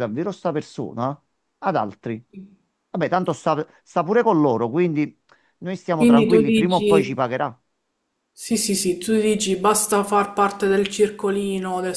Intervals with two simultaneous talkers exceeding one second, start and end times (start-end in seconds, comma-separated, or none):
6.0-7.2